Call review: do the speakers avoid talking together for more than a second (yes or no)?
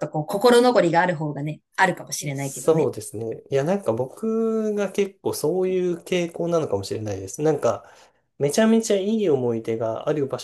yes